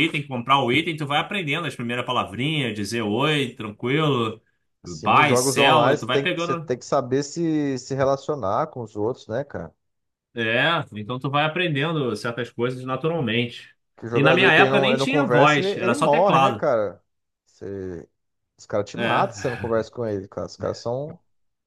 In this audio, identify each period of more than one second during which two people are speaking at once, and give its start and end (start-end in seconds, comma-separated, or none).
4.8-6.7, 14.1-16.6